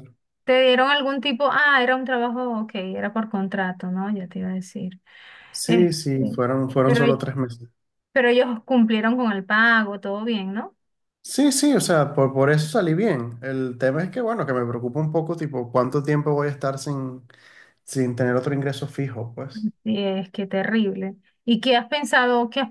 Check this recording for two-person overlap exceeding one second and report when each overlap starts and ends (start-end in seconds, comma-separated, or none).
none